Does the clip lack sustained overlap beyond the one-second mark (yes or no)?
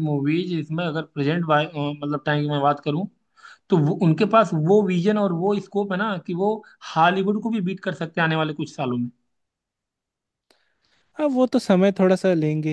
yes